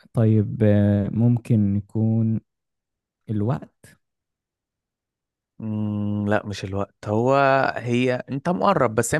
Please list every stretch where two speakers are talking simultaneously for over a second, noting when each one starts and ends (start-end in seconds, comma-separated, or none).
none